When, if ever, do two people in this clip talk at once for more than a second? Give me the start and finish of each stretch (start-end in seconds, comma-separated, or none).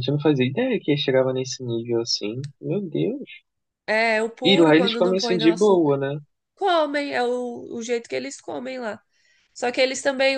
4.4-6.0